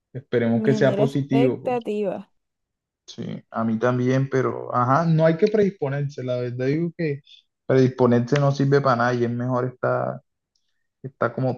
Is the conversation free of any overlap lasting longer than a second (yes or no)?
no